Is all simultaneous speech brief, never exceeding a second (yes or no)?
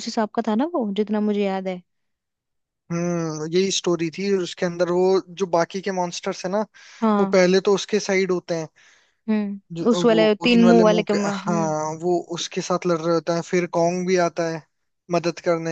no